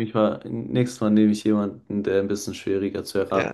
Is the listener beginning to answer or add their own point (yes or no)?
yes